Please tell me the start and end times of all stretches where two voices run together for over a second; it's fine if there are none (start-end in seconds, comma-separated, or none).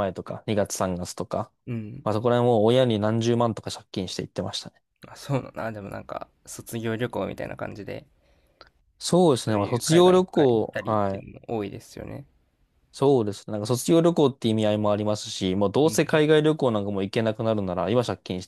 9.4-11.2